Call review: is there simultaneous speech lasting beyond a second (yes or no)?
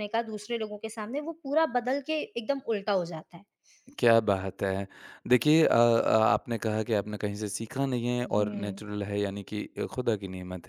no